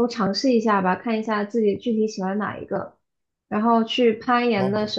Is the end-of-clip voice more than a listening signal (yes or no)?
no